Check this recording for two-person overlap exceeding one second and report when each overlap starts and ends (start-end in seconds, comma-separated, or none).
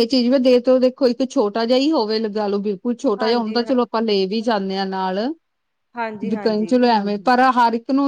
none